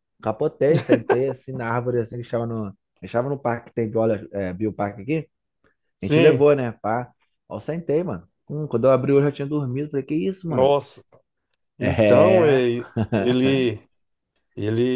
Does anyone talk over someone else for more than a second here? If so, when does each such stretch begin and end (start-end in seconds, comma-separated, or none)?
11.8-13.6